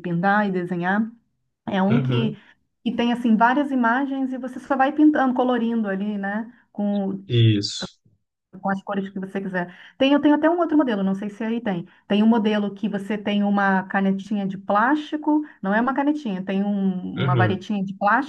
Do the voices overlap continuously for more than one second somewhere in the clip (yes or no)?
no